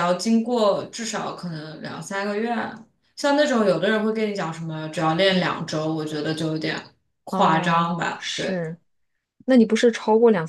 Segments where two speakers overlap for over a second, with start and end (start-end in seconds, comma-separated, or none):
7.3-8.6